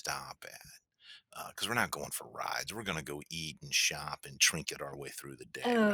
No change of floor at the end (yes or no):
no